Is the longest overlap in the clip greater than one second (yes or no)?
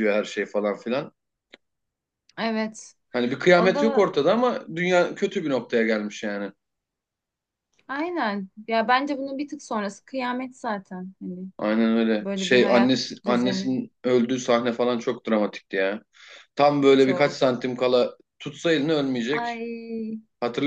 yes